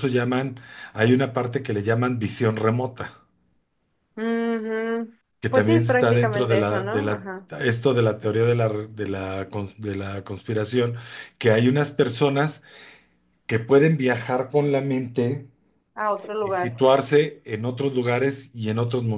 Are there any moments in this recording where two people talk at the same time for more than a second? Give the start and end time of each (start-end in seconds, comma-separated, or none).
5.4-7.5